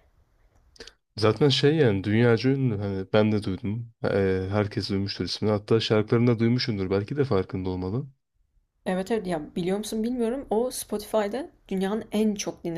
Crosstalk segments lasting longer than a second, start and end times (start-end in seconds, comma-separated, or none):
none